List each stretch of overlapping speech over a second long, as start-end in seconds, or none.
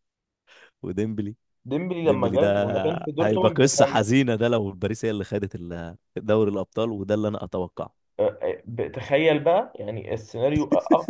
2.0-4.0